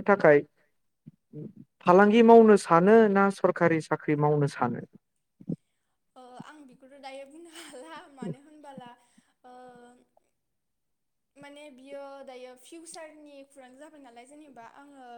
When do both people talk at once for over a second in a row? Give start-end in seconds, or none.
none